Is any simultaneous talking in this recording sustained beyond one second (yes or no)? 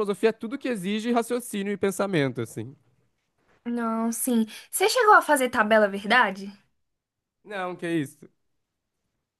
no